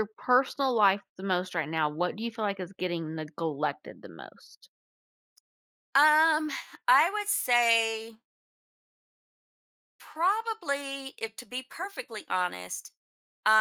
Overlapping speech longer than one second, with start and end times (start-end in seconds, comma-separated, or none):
none